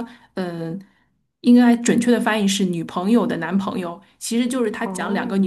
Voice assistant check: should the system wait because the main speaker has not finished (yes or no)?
yes